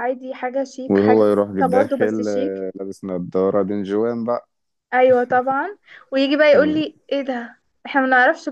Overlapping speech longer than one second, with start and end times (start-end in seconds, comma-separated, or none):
0.9-2.7